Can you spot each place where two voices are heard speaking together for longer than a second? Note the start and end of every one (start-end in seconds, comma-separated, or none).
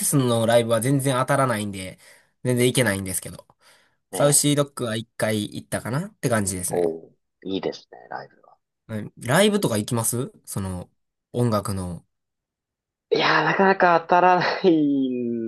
none